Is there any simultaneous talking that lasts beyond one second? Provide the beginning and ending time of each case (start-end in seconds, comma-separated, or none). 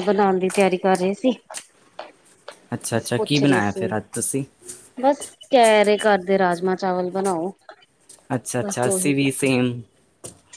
2.9-4.4